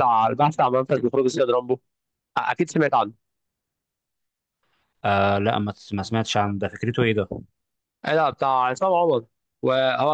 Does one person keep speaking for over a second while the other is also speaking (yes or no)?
no